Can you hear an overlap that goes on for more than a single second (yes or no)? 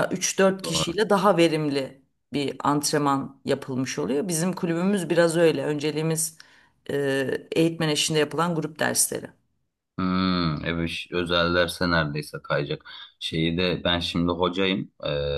no